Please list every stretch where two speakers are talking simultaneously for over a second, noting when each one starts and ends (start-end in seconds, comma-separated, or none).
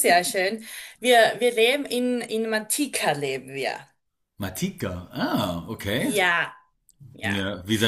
none